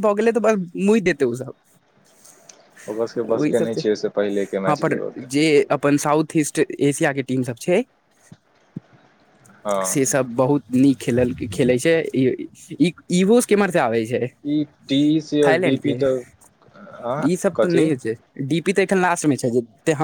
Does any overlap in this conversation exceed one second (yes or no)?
no